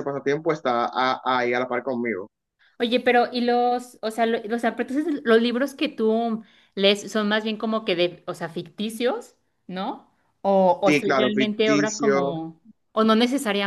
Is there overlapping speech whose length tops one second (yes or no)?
yes